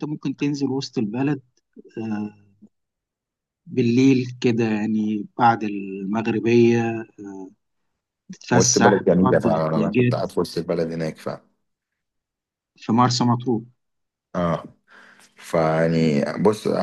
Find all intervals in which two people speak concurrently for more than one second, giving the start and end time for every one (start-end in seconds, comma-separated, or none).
8.5-10.1